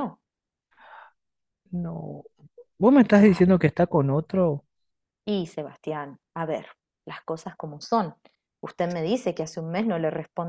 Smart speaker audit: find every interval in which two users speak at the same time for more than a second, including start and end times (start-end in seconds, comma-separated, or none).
none